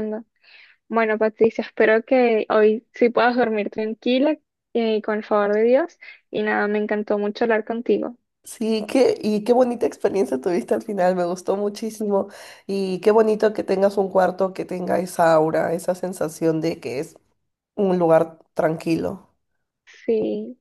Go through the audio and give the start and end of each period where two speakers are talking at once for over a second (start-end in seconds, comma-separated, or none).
none